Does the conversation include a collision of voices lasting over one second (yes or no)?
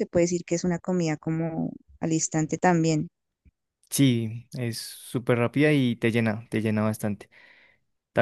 no